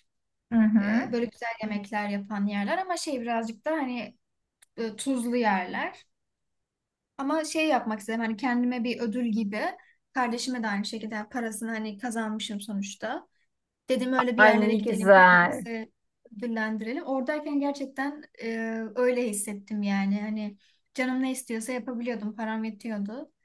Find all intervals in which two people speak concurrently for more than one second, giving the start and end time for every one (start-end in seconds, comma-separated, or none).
14.4-15.7